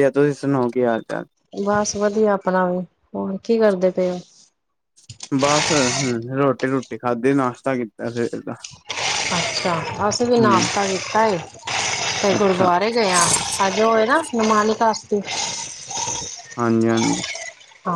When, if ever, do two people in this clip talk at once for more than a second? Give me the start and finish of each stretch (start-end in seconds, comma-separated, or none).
none